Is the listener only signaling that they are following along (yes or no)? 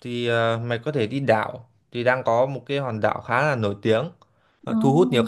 yes